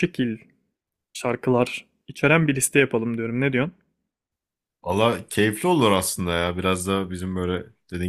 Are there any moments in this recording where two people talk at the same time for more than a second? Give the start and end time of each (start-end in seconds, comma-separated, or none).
none